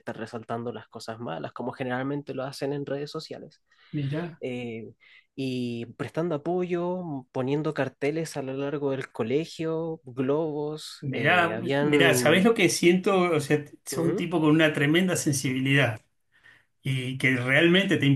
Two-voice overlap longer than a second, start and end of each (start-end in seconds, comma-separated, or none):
11.0-12.5